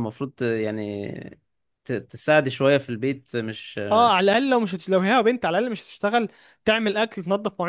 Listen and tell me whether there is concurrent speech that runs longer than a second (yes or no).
no